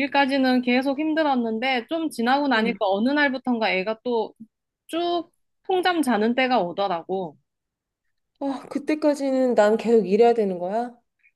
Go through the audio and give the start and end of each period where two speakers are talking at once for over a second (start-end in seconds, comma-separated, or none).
none